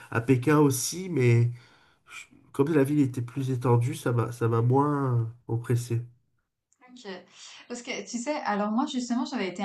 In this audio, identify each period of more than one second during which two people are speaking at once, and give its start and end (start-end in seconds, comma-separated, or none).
none